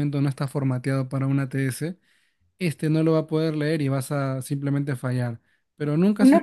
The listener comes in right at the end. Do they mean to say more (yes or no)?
yes